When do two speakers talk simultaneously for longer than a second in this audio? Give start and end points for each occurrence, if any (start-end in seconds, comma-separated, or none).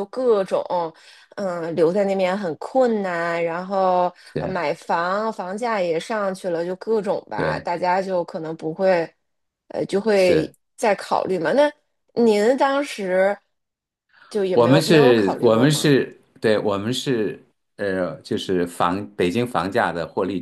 14.5-15.9